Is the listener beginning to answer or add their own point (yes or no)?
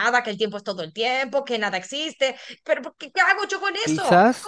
yes